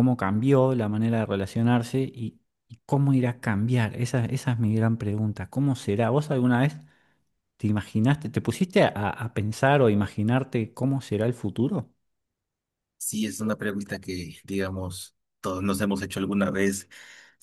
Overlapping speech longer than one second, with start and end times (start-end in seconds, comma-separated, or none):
none